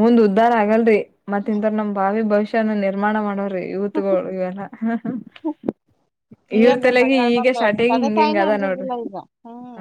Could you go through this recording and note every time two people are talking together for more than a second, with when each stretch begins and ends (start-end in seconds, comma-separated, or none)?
6.6-8.9